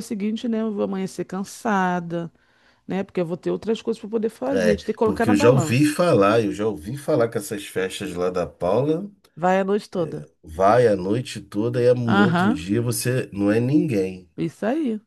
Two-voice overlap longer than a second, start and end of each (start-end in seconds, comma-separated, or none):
4.5-6.0